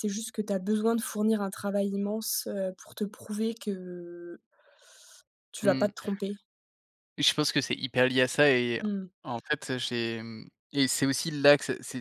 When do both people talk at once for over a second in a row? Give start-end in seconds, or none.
none